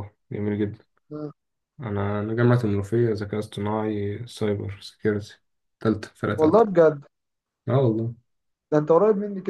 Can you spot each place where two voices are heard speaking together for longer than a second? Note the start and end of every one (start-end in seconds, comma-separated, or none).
none